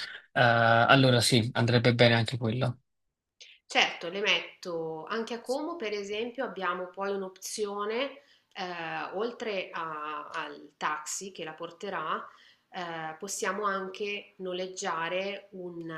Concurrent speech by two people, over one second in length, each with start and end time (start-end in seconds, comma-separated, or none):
none